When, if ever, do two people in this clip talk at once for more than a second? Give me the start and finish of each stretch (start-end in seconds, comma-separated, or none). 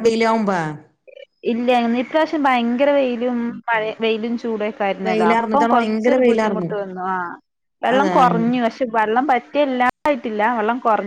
5.1-6.7